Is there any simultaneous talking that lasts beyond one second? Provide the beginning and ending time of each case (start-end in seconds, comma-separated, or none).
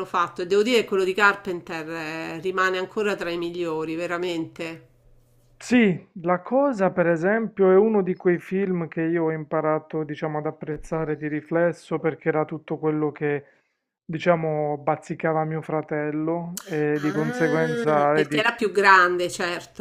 17.0-18.4